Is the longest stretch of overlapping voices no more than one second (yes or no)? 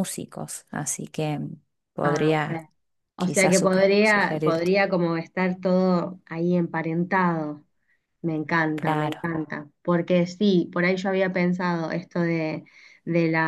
no